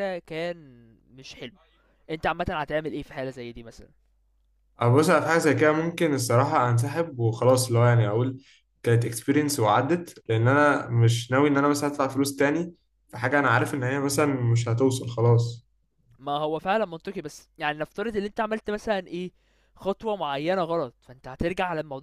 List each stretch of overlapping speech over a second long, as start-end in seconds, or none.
none